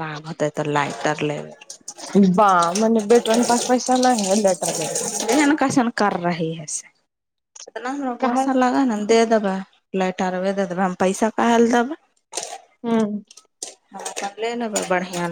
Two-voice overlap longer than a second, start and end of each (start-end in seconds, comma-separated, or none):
none